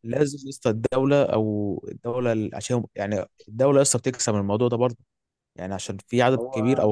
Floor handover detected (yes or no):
no